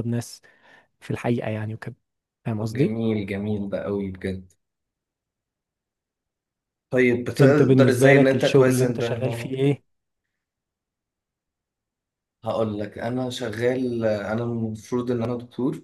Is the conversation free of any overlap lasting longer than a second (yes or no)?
no